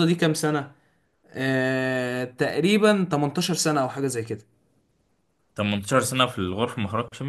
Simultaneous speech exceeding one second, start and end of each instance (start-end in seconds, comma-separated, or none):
none